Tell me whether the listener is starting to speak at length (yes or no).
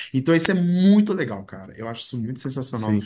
yes